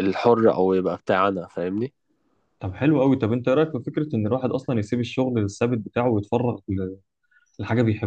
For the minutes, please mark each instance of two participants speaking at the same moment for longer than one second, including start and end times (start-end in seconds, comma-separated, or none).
none